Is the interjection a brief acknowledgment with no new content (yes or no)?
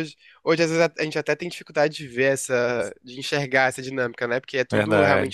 yes